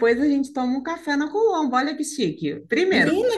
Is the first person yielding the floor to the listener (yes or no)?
yes